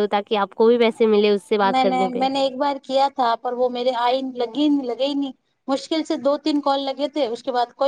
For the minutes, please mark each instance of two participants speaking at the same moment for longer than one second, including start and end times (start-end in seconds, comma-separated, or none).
0.7-2.3